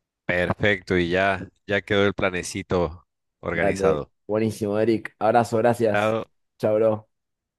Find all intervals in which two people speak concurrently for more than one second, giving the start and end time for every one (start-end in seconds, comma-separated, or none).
none